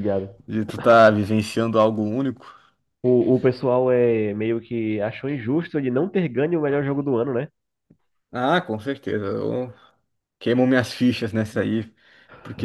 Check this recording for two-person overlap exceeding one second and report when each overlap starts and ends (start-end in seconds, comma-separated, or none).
none